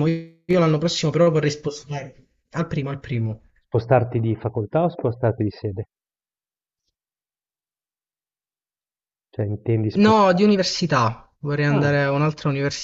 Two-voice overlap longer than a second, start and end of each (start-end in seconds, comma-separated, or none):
none